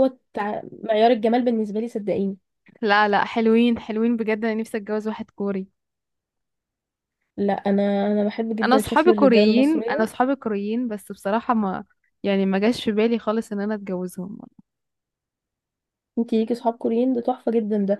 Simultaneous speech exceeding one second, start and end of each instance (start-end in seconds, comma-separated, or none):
8.6-10.1